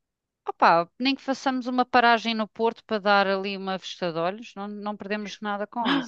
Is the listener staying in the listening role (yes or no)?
no